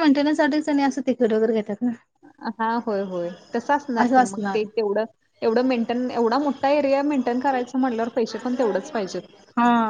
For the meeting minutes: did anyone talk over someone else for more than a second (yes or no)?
no